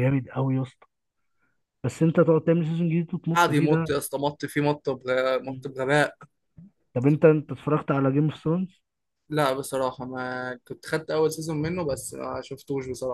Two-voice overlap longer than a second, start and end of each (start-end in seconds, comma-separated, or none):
none